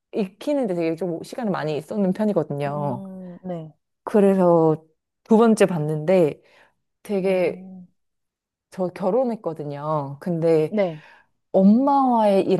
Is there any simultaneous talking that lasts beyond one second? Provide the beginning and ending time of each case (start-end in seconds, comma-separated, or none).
none